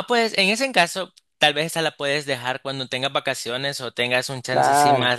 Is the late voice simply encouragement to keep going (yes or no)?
yes